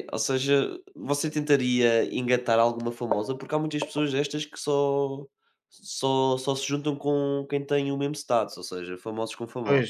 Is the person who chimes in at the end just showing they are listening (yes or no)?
no